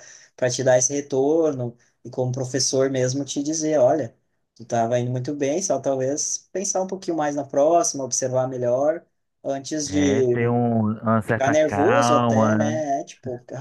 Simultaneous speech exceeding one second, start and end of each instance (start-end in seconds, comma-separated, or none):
11.3-12.8